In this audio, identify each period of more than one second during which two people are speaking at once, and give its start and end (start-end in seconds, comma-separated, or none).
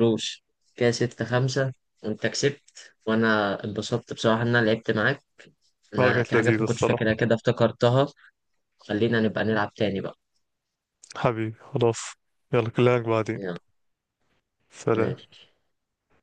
6.0-7.2